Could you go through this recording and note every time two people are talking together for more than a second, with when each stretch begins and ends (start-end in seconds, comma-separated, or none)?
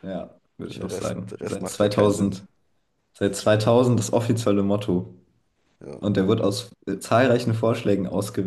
0.7-2.4